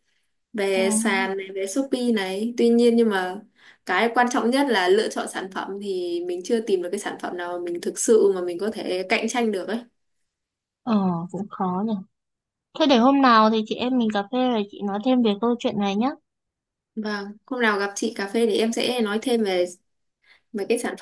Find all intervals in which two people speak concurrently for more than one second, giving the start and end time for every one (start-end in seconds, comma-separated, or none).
none